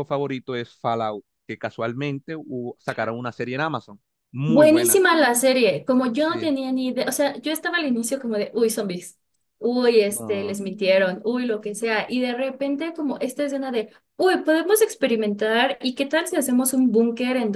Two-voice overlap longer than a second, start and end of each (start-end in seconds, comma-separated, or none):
none